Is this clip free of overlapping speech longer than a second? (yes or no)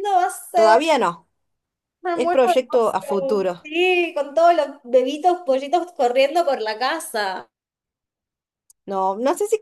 no